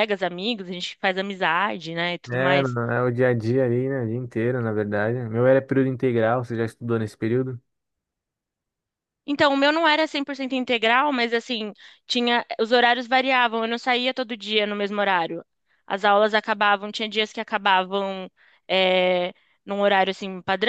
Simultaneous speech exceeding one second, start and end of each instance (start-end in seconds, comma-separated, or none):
none